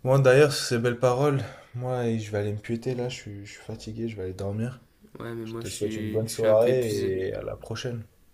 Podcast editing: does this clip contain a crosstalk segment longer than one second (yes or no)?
yes